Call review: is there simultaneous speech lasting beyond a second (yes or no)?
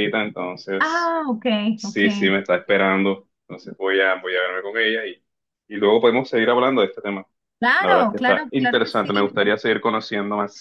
yes